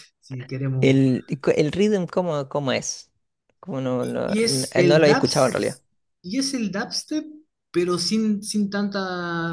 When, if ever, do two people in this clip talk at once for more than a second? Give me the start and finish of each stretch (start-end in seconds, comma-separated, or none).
4.0-5.8